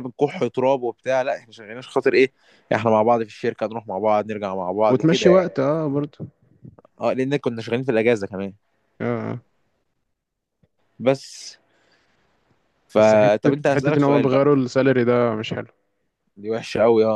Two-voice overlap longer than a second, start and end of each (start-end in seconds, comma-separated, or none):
13.0-14.4